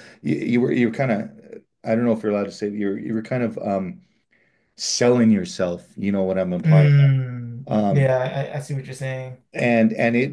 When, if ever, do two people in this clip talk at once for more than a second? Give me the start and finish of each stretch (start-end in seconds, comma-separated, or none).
none